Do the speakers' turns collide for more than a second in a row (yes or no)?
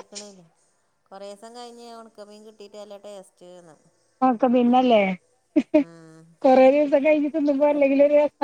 no